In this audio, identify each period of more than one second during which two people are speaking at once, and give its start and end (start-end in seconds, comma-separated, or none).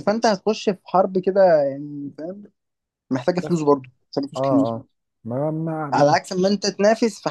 none